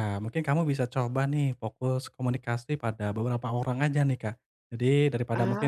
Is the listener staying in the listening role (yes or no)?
yes